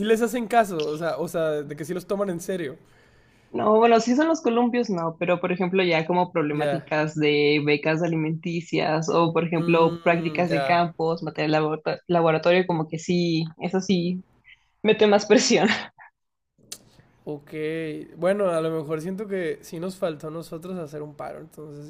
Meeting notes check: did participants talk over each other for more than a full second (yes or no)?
yes